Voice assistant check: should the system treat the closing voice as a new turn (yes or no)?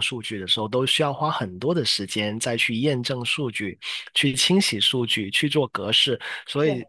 no